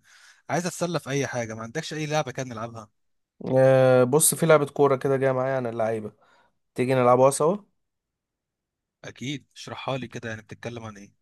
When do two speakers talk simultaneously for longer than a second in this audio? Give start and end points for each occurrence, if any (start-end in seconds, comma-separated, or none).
none